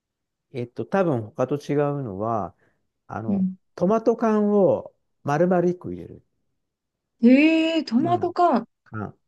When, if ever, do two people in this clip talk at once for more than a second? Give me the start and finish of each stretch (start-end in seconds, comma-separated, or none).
none